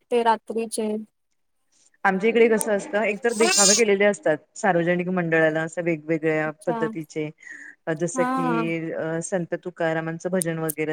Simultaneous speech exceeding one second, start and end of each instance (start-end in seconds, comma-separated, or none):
none